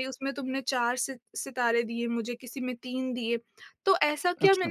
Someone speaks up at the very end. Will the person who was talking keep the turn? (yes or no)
yes